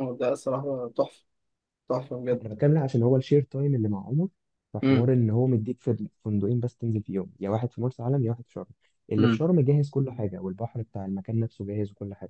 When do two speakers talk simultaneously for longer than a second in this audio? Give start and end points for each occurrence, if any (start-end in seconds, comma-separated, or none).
none